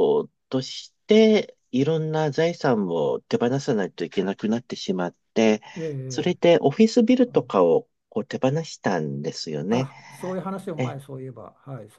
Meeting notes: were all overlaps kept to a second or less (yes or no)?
yes